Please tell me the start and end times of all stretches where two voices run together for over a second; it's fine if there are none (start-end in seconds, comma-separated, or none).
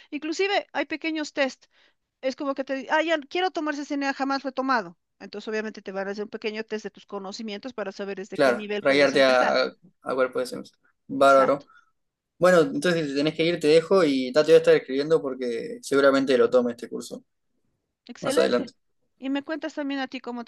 8.3-9.6